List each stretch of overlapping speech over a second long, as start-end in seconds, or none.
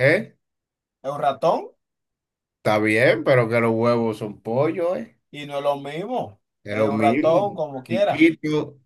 6.6-8.2